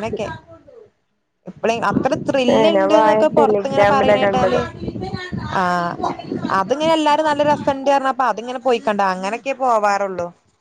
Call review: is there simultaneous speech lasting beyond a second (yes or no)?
yes